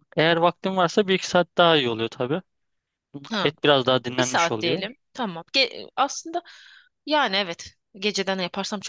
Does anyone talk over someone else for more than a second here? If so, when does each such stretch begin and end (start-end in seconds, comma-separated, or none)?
3.4-4.8